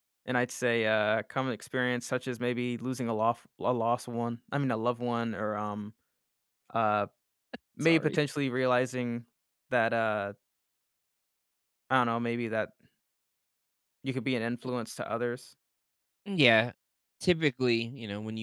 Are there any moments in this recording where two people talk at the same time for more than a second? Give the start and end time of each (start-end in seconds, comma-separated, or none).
none